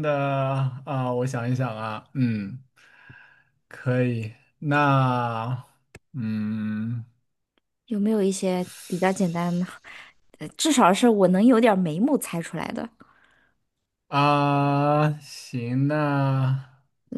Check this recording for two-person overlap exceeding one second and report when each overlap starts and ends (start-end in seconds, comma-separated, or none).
none